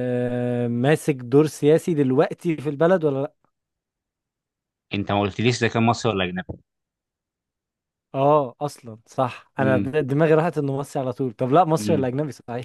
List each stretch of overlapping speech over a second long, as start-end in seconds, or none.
none